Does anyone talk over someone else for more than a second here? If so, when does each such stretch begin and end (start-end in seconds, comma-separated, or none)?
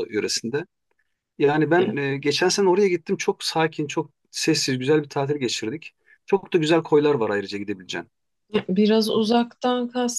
none